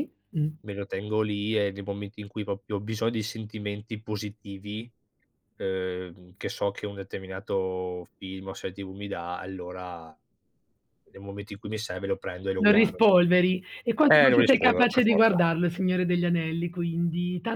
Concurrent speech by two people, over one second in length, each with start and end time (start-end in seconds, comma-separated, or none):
14.1-15.4